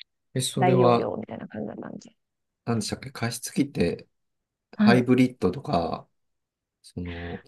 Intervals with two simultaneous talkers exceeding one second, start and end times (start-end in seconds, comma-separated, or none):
none